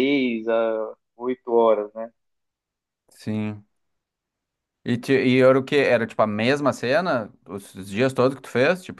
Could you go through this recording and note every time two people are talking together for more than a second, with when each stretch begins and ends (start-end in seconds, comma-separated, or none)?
none